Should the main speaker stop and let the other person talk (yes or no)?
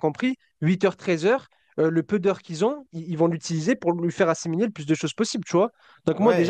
yes